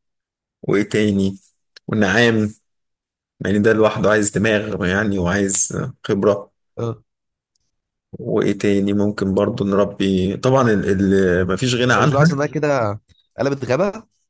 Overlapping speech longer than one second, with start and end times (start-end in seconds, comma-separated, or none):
none